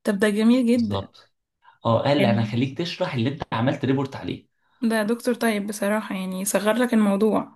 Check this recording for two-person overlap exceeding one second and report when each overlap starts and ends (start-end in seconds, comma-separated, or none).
none